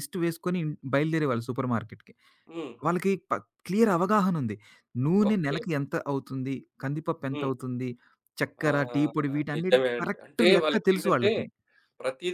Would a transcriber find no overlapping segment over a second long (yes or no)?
no